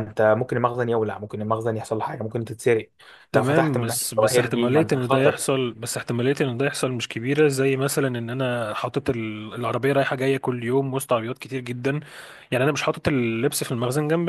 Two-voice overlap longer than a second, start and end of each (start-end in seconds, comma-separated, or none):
3.4-5.4